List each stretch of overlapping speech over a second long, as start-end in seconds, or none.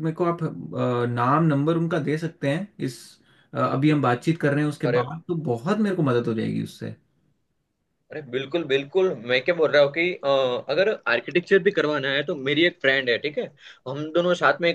none